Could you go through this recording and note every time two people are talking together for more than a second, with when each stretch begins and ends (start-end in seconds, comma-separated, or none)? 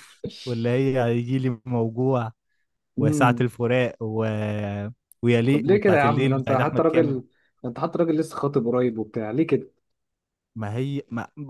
5.5-7.2